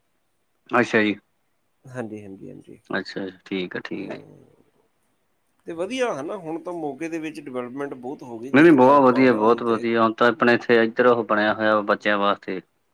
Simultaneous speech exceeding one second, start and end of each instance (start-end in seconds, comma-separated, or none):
8.6-9.8